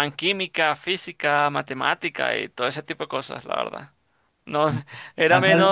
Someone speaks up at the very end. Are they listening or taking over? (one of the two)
listening